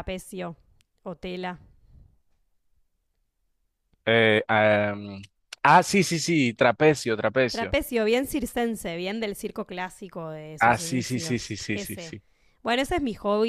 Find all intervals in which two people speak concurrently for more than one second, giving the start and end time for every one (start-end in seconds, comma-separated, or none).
10.6-12.2